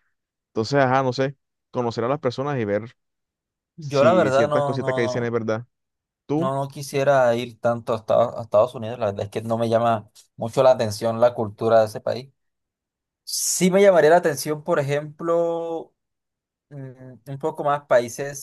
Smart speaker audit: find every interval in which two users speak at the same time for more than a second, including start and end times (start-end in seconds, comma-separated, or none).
3.8-5.4